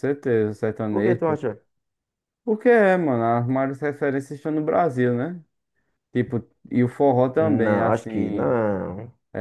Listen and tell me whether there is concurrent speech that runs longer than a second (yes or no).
yes